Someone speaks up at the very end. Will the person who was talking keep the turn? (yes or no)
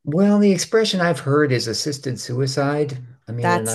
yes